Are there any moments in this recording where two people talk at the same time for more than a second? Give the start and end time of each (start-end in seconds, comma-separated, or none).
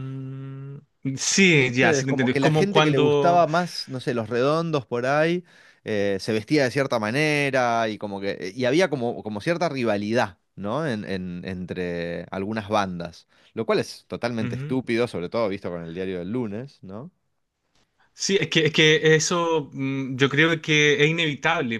1.4-3.4